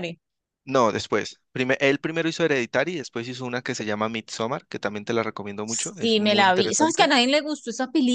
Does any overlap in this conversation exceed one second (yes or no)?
yes